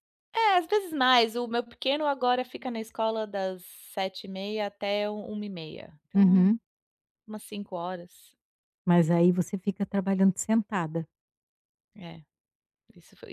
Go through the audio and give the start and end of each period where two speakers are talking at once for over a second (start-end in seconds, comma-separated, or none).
none